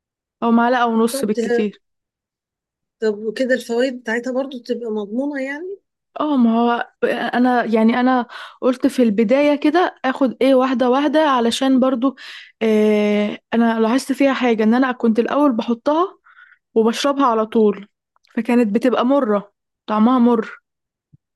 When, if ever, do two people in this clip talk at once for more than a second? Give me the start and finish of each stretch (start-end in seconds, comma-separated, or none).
none